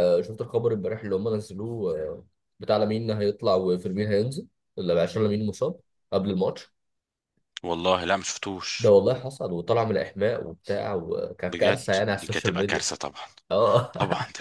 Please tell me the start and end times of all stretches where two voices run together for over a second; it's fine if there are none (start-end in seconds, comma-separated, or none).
11.5-12.8